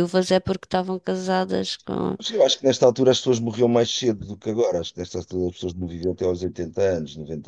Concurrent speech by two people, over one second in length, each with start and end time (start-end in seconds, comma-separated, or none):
none